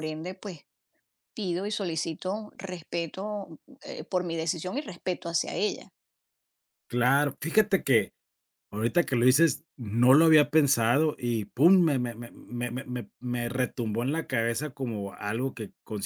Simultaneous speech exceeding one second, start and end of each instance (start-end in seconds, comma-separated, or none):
none